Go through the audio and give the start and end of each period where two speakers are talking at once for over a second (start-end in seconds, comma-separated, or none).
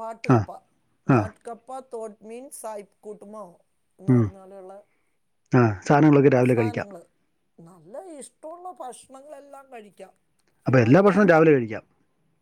none